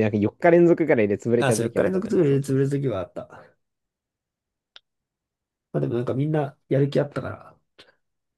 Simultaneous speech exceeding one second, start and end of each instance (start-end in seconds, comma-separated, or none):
1.4-2.9